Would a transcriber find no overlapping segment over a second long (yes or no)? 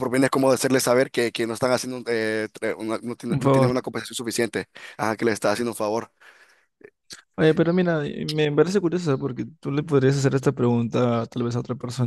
yes